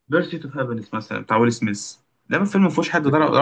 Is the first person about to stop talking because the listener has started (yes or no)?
no